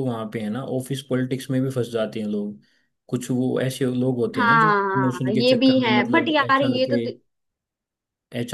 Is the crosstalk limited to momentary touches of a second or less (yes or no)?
no